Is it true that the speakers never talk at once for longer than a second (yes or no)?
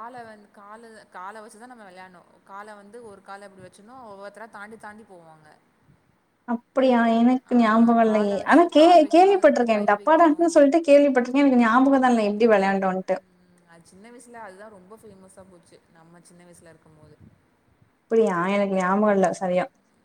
no